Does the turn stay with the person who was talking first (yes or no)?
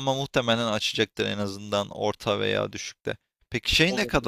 yes